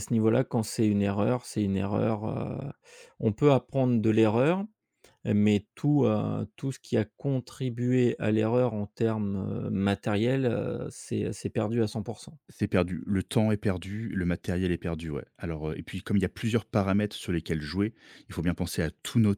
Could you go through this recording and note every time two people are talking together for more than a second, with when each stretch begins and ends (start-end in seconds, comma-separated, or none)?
none